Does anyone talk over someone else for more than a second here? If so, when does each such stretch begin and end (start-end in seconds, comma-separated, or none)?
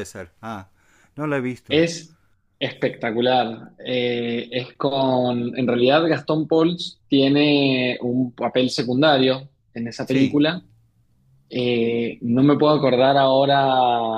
none